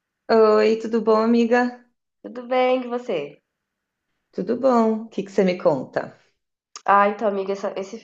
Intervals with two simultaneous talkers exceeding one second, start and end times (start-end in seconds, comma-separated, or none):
none